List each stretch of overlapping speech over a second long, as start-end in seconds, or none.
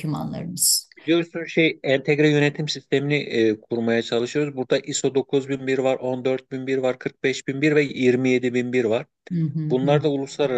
none